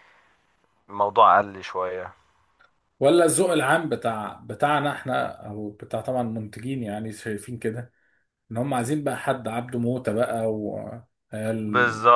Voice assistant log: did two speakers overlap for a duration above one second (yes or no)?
no